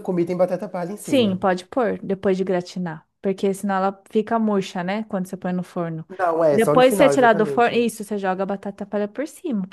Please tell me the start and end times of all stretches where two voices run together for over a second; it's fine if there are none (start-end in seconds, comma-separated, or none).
6.5-7.8